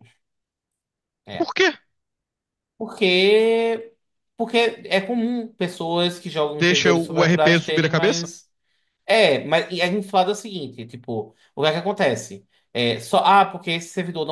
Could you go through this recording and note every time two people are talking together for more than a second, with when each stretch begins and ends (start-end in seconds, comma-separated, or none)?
6.6-8.3